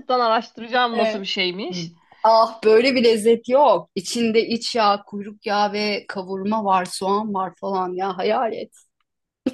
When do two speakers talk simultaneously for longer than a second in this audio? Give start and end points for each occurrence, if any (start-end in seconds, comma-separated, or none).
none